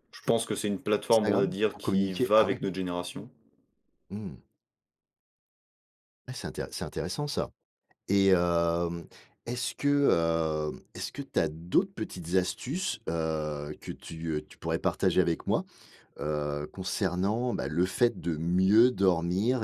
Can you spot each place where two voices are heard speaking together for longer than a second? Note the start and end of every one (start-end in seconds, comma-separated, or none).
1.1-2.6